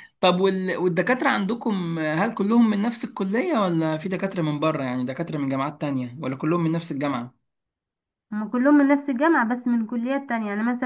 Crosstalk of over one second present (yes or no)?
no